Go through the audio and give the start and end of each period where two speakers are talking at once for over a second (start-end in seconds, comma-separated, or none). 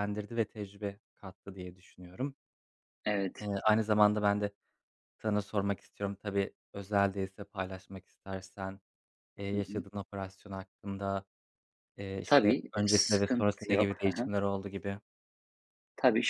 12.3-14.3